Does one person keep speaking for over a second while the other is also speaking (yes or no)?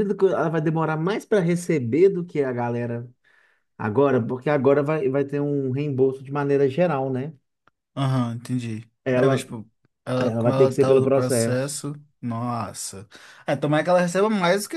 yes